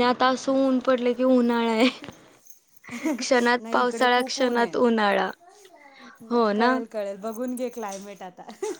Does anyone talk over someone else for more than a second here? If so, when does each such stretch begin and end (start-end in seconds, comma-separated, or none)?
3.2-4.9